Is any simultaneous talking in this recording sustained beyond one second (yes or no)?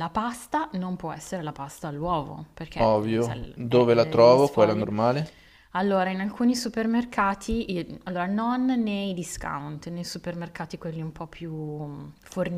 yes